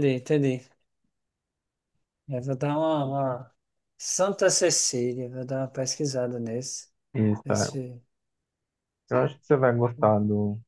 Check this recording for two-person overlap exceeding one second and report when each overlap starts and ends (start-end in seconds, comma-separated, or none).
none